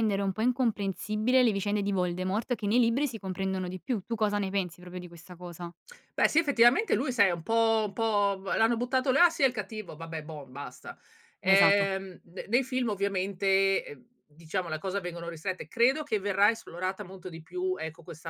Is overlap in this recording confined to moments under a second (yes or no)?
yes